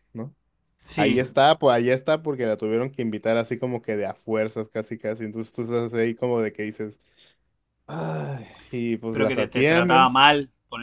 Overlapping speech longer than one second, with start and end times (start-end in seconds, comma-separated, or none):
9.1-10.3